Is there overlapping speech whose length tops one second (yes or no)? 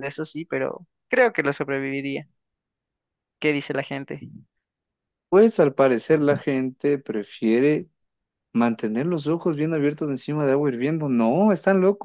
no